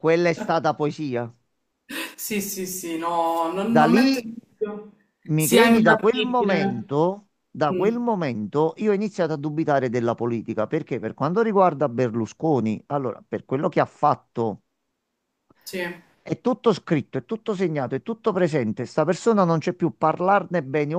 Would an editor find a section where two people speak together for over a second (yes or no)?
yes